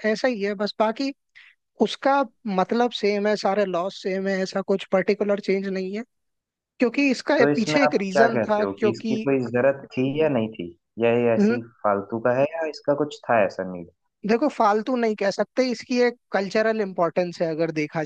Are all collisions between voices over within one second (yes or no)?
no